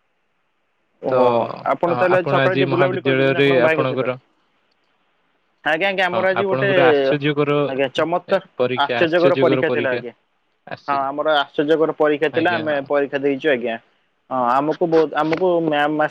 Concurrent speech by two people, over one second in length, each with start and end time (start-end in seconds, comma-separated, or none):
2.2-4.0